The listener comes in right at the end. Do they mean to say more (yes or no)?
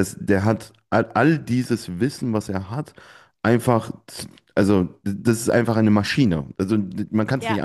no